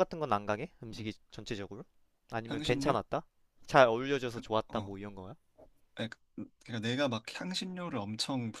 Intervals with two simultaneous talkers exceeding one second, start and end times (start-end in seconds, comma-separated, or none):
none